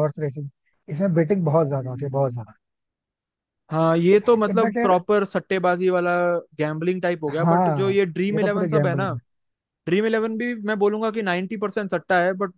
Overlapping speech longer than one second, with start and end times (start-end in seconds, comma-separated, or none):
7.3-9.1